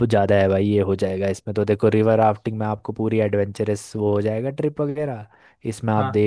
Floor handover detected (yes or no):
no